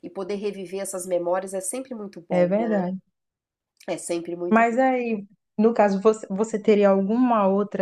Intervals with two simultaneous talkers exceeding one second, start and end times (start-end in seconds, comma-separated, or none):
none